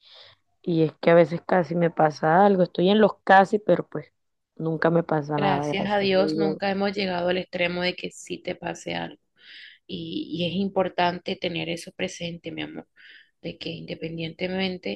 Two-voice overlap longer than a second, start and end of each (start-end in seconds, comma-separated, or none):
5.4-6.6